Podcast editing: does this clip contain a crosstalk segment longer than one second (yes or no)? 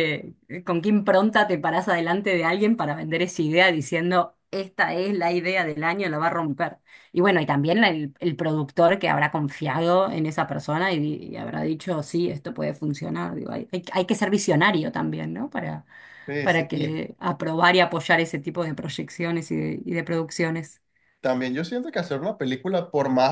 no